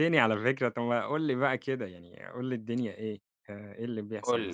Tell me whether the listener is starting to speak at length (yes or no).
yes